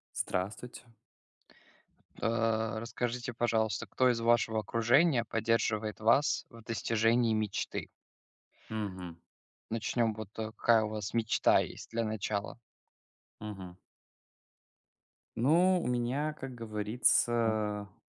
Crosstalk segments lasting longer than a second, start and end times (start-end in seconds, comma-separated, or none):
none